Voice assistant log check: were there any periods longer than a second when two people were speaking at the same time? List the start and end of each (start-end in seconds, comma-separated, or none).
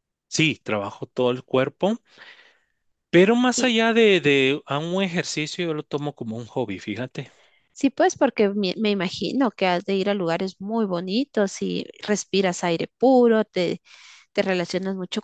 none